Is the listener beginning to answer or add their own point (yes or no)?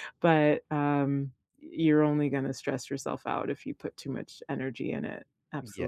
yes